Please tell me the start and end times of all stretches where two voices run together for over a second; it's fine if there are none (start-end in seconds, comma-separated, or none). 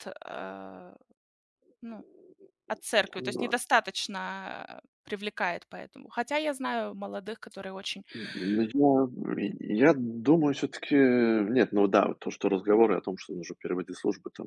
none